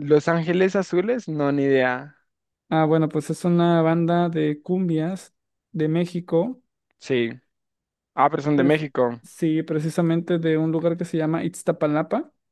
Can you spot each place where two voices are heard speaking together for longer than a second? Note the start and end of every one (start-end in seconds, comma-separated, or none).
none